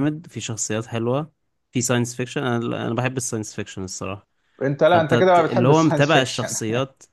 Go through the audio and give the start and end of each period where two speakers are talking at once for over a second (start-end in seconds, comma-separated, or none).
4.9-6.6